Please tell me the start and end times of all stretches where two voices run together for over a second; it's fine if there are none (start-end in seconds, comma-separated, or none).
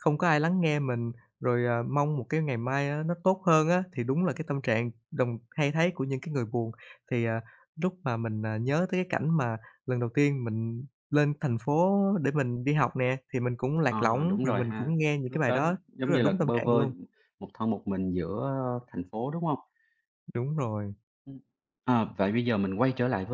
13.9-16.9